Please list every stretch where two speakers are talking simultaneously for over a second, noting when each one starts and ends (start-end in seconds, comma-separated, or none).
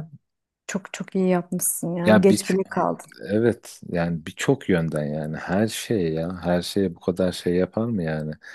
none